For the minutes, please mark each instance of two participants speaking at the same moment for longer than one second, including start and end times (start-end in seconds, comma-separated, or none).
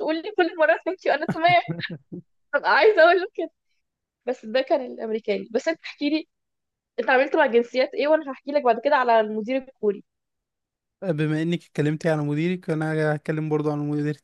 none